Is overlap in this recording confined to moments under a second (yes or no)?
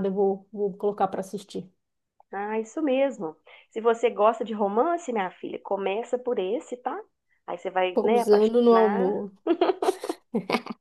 no